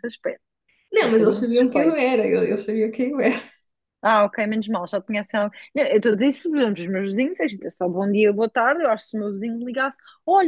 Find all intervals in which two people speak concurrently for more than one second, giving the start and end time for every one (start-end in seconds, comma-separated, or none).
1.0-2.2